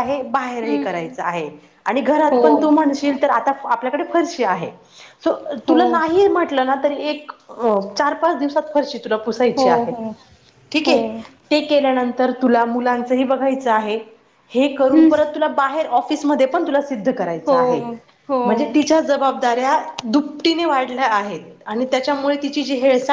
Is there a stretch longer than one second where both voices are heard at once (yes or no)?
no